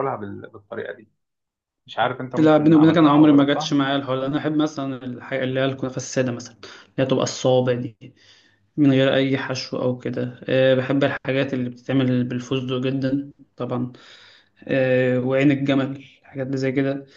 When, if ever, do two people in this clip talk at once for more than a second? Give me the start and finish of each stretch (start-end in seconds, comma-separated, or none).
2.4-3.8